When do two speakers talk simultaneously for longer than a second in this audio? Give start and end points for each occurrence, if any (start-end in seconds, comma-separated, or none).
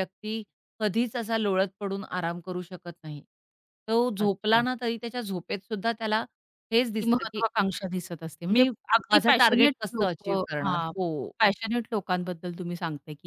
8.5-10.9